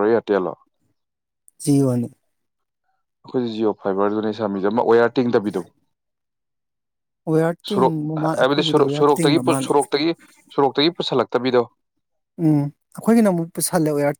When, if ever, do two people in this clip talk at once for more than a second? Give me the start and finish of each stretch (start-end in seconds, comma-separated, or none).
7.8-9.7